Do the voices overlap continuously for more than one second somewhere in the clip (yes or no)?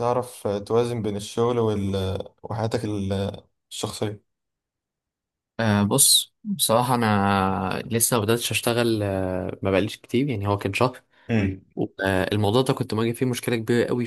no